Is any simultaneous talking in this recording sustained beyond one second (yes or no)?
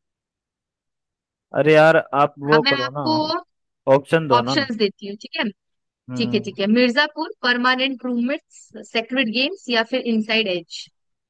no